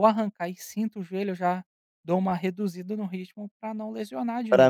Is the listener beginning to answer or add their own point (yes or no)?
yes